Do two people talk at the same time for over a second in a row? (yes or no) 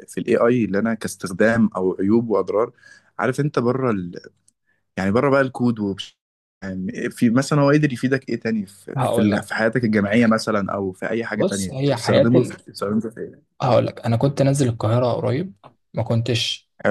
yes